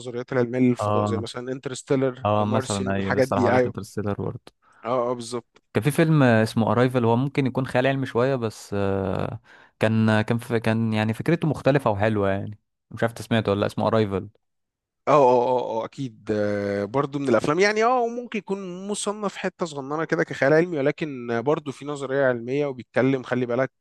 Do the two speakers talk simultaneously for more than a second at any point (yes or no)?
yes